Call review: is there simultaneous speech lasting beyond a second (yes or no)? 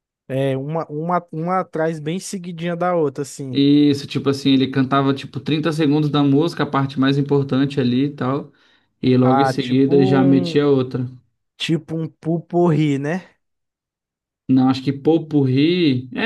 yes